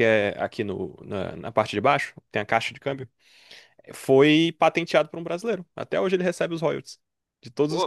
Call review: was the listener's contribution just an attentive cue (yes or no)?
yes